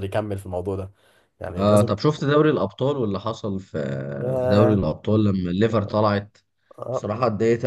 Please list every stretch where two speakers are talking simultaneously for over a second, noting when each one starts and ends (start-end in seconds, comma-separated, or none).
none